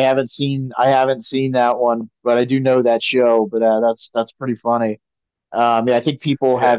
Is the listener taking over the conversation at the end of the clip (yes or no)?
no